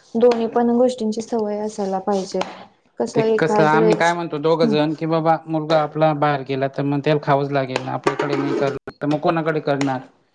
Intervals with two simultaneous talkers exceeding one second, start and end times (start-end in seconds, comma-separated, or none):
3.2-4.7